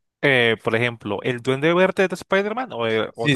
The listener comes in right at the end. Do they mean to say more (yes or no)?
yes